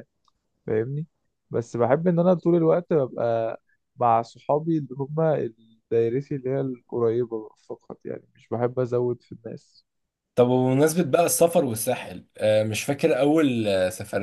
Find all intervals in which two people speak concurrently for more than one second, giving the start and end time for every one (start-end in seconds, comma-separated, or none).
none